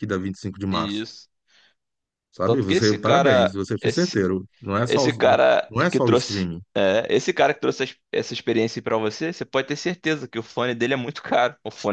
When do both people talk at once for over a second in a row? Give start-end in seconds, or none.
2.4-4.2, 4.8-6.6